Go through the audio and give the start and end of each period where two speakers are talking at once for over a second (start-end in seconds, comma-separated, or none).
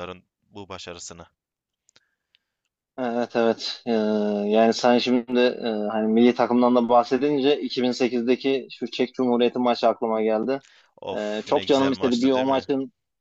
11.2-12.7